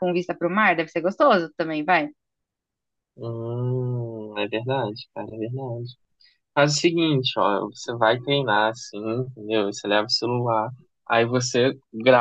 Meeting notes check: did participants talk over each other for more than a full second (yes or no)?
no